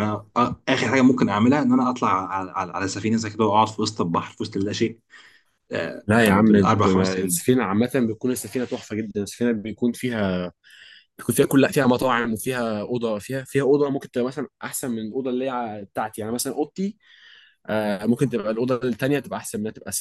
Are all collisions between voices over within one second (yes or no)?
no